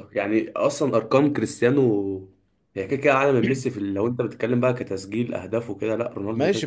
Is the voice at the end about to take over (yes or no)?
yes